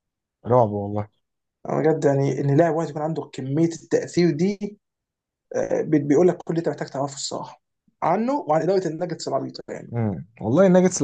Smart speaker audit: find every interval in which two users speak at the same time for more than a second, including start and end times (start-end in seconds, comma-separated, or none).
none